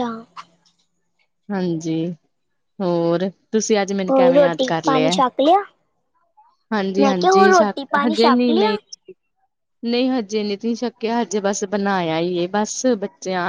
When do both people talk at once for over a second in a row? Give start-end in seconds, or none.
7.0-8.8